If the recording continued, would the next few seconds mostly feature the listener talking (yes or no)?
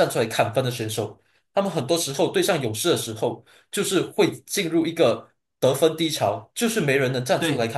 yes